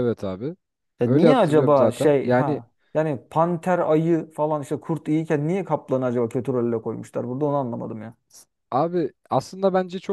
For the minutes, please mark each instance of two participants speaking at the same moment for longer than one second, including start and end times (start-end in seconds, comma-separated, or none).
1.0-2.6